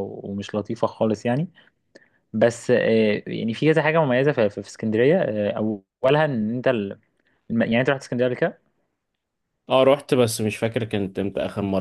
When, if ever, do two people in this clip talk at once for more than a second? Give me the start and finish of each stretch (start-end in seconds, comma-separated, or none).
none